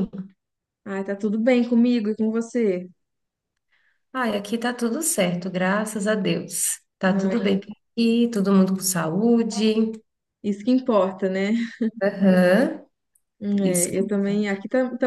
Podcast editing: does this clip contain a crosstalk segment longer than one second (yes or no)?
no